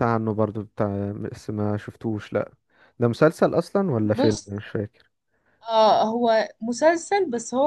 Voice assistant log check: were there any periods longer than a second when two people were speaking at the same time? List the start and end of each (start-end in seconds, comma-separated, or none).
none